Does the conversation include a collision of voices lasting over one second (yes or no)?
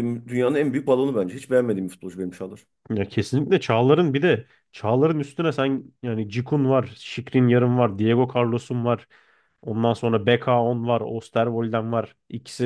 no